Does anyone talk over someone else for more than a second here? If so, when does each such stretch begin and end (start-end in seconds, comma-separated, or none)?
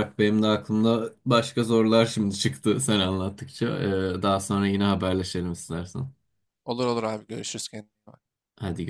none